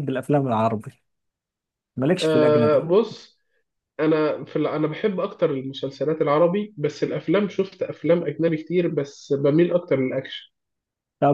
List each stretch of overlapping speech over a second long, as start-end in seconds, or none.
none